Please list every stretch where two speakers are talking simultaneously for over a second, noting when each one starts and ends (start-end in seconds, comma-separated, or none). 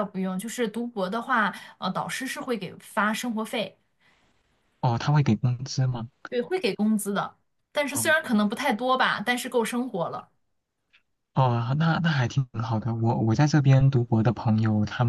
none